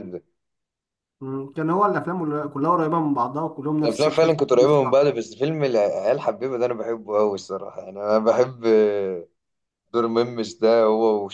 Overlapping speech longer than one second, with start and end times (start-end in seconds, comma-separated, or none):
3.9-5.2